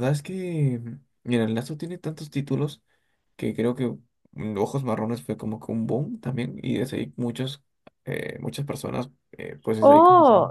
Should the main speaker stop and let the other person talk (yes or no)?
yes